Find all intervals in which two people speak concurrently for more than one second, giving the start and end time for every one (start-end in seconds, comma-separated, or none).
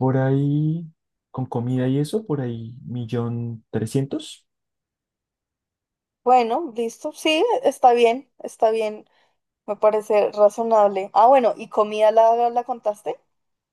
none